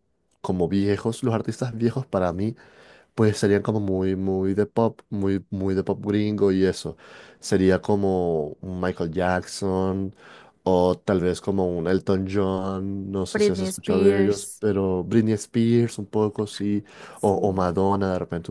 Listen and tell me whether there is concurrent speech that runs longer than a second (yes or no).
yes